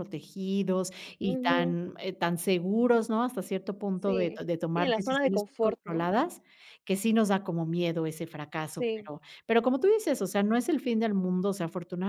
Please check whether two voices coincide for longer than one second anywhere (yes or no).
yes